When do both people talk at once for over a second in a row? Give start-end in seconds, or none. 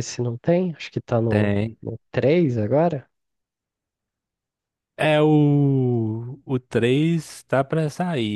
none